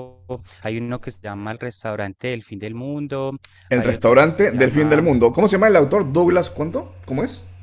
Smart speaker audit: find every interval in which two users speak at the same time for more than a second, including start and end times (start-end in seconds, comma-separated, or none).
3.7-5.1